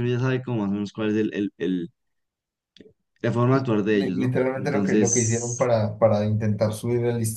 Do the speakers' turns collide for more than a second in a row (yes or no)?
yes